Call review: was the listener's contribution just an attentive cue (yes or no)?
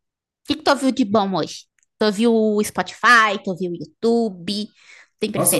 no